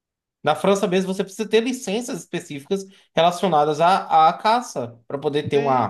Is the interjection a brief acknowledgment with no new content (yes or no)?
no